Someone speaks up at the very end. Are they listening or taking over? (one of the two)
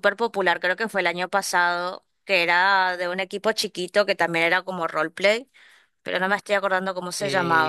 taking over